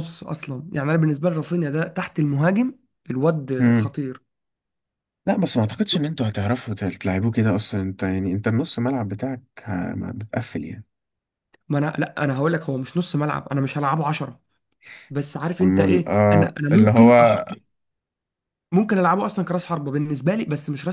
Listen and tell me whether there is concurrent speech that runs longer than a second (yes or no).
yes